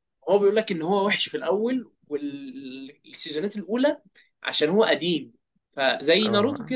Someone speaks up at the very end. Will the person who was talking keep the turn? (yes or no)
no